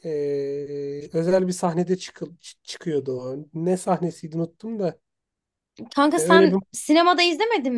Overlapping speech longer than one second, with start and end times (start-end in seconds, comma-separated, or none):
none